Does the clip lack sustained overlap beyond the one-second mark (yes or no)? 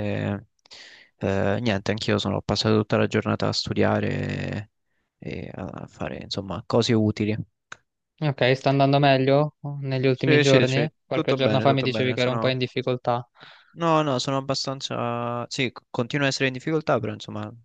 no